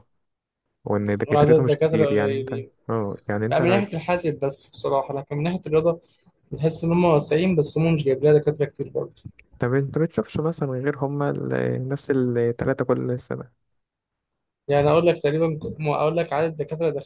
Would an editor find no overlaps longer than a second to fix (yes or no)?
no